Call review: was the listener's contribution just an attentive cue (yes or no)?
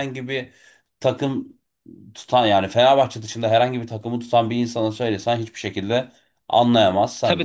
no